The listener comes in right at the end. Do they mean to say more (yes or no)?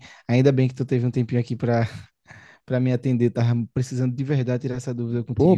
yes